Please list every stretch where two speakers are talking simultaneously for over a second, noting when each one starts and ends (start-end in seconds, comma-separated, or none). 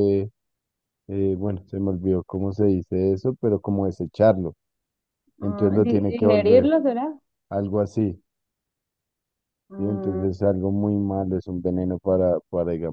5.4-6.7